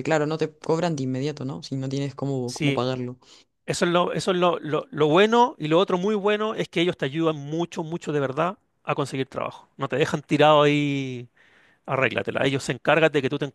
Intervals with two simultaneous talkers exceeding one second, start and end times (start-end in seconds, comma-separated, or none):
none